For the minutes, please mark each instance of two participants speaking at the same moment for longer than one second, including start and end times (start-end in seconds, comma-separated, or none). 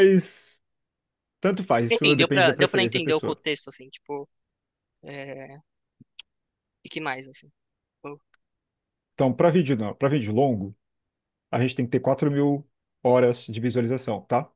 1.9-3.4